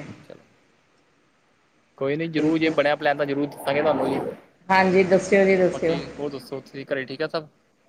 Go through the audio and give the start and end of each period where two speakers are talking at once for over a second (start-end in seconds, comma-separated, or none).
none